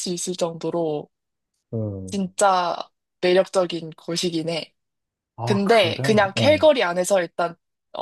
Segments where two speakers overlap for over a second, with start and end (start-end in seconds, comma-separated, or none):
5.4-6.7